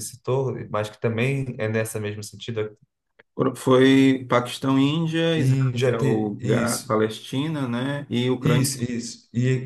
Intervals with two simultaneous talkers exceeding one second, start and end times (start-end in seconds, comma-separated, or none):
5.4-7.0